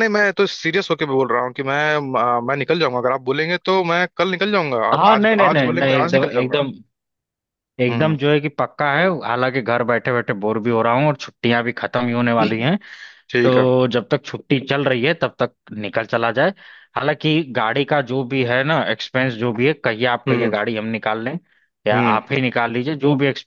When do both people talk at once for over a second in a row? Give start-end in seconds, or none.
4.9-6.6